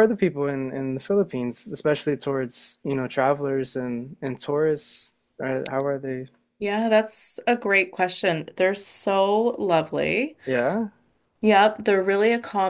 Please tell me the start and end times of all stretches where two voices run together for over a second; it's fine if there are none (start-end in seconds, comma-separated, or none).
none